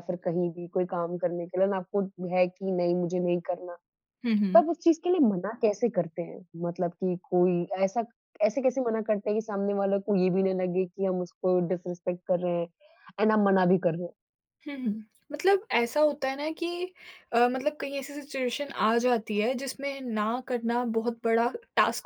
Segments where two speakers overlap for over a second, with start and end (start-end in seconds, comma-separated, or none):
none